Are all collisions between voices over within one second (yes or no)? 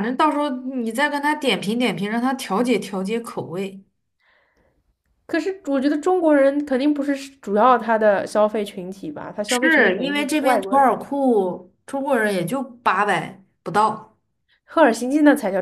no